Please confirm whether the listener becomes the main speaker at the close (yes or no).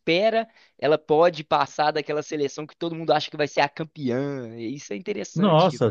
yes